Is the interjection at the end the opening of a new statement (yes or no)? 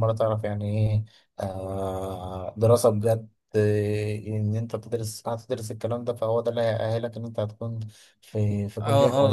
yes